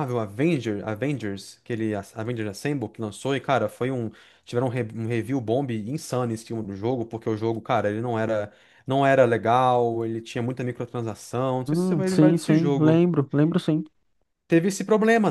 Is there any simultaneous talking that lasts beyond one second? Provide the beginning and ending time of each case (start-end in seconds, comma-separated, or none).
11.7-13.0